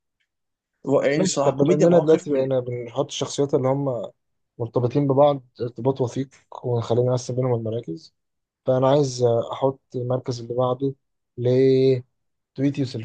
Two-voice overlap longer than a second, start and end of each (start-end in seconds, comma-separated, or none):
1.1-2.5